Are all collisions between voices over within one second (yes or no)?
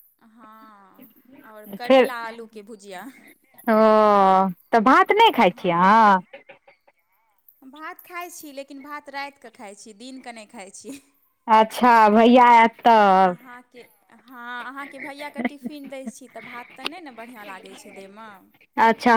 yes